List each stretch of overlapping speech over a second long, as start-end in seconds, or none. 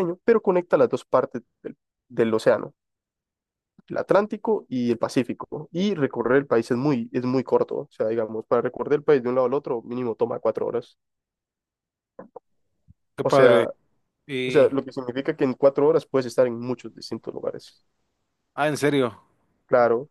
none